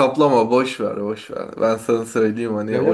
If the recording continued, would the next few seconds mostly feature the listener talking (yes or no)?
no